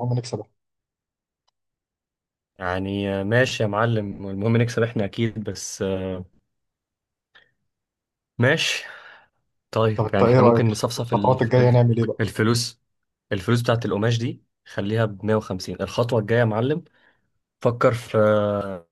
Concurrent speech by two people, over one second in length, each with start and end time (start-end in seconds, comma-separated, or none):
9.9-11.8